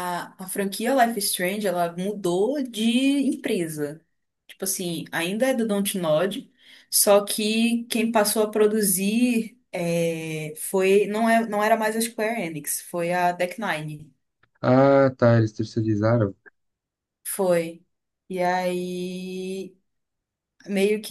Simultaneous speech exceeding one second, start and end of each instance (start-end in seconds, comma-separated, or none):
none